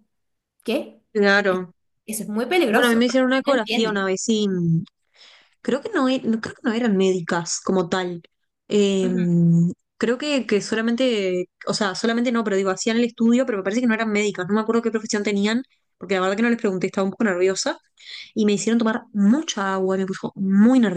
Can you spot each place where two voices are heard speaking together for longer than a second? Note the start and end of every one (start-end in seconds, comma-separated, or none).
2.7-4.1